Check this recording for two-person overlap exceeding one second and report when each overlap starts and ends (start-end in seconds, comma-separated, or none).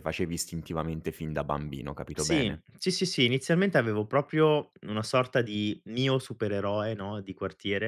none